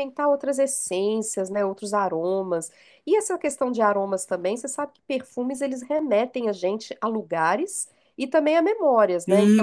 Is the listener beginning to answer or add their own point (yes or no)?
yes